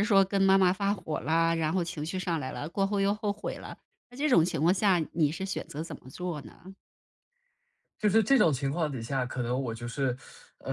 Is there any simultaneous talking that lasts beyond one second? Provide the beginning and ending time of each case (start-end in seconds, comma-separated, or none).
none